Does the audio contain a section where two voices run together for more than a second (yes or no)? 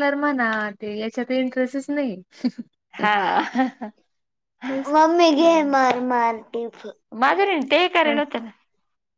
no